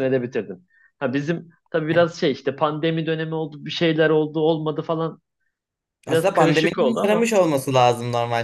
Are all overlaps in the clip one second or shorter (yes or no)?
no